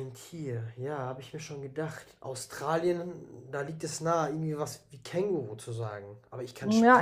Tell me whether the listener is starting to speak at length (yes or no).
yes